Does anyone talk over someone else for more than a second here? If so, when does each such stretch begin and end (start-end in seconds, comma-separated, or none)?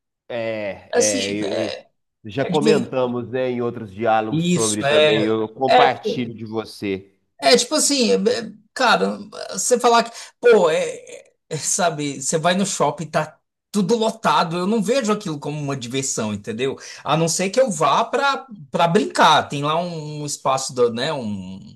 4.3-6.3